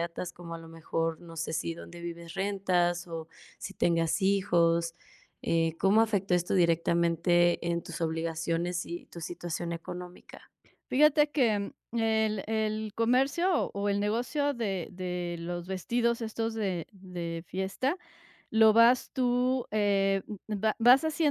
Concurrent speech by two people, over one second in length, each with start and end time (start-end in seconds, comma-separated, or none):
none